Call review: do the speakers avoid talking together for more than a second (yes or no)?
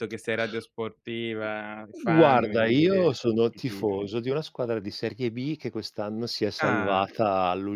no